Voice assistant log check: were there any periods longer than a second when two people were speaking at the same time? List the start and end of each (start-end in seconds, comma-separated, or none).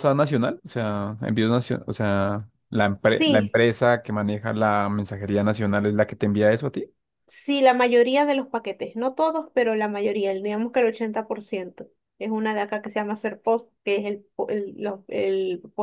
none